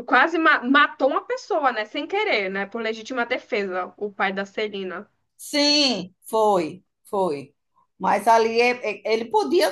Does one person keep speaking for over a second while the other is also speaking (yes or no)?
no